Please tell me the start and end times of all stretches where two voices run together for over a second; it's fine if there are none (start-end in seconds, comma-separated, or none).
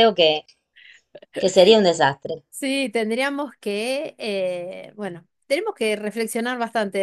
none